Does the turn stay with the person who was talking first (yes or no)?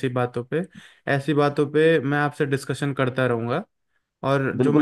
no